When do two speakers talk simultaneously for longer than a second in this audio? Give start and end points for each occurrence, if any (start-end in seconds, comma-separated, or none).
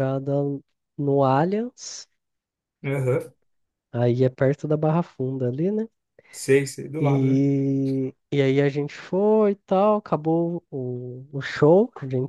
none